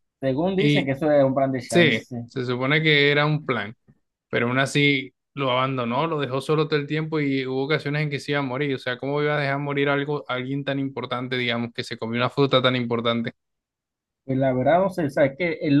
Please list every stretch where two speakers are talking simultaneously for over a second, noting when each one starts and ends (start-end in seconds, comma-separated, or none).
none